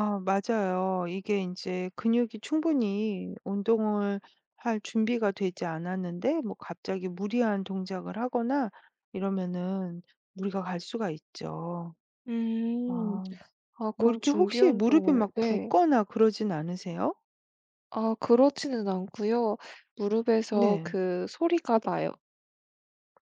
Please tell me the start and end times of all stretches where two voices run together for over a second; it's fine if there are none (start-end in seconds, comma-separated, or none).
14.0-15.7